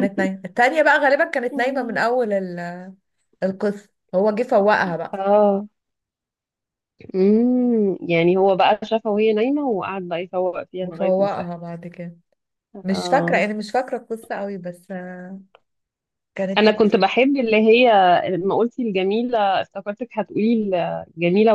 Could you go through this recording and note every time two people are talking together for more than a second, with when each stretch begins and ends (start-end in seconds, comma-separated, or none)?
none